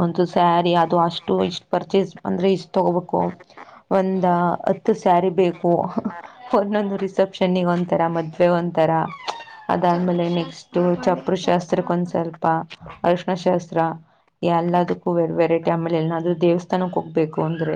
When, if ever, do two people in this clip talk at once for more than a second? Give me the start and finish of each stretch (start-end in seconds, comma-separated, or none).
9.9-11.8